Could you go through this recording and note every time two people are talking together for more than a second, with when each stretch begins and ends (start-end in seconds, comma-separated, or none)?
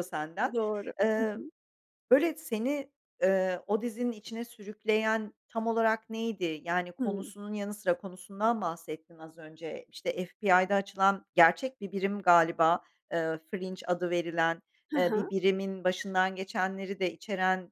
none